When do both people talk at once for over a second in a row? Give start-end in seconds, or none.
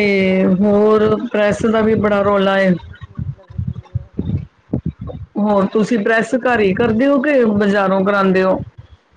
0.6-2.7